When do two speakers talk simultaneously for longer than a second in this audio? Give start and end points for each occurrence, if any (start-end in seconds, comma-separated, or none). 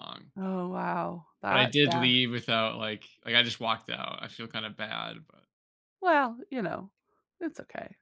none